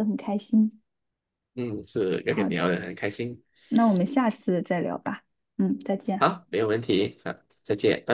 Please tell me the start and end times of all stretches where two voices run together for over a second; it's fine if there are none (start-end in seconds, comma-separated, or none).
none